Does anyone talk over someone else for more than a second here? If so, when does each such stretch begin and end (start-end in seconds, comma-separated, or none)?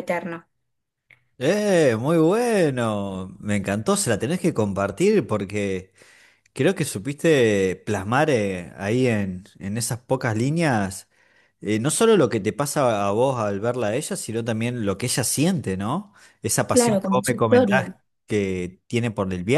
16.7-17.9